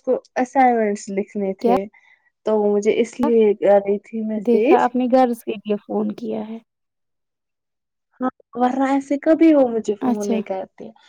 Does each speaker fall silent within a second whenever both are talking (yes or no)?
yes